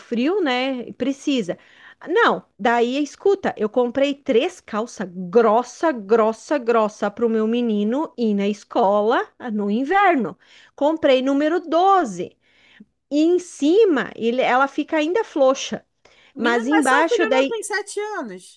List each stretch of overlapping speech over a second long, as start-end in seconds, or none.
16.4-17.6